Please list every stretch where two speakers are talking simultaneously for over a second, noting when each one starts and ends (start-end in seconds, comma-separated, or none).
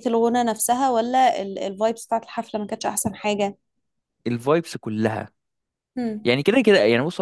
none